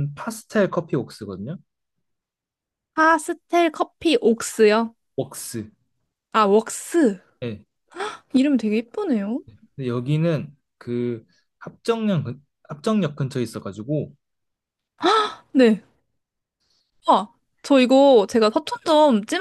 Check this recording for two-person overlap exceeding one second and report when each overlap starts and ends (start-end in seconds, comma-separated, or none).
none